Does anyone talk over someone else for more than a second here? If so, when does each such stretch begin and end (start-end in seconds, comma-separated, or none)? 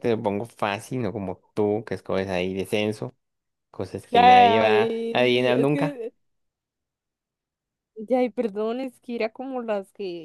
4.1-6.0